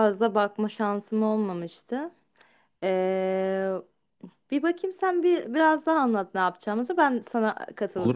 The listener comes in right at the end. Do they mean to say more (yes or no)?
yes